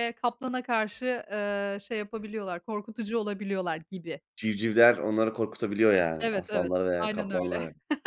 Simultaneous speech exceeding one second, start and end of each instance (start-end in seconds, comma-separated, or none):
6.2-7.6